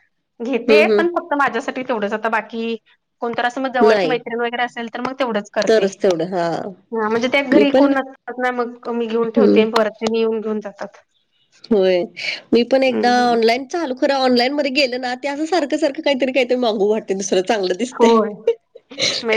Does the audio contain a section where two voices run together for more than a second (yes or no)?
no